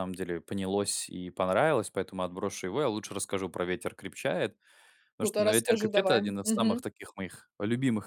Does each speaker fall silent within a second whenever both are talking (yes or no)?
no